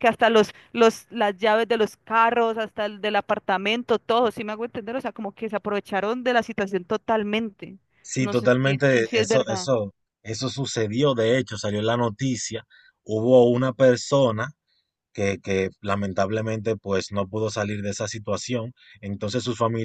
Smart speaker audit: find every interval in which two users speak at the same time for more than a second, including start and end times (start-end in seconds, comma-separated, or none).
8.2-9.7